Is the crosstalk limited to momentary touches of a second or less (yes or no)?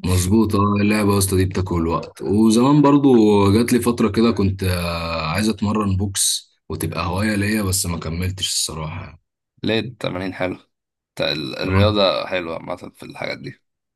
yes